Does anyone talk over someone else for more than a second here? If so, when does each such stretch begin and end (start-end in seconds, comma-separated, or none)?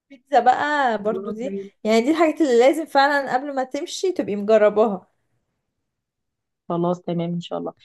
none